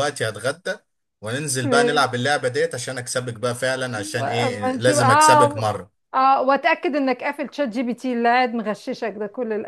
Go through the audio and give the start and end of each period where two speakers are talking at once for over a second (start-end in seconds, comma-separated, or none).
4.2-5.7